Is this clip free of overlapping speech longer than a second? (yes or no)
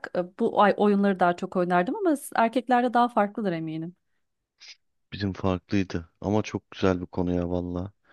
yes